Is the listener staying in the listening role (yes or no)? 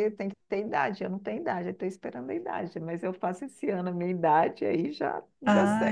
no